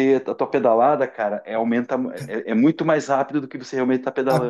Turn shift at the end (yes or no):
yes